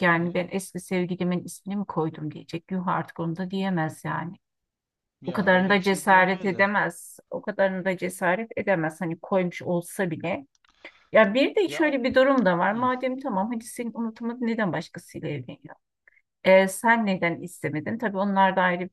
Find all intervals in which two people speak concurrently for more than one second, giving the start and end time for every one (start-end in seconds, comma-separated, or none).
5.3-6.6